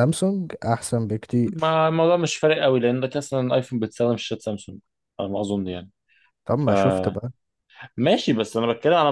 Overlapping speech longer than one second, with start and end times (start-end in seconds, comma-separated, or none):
none